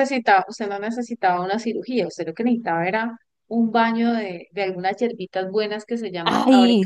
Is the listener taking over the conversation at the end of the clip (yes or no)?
no